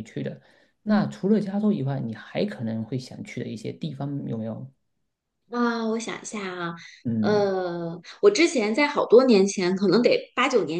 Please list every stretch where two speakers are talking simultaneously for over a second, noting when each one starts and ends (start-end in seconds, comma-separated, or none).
none